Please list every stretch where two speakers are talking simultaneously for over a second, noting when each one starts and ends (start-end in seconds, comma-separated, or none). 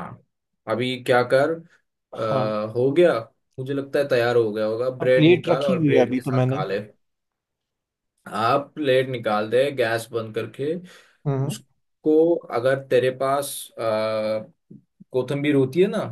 5.0-6.6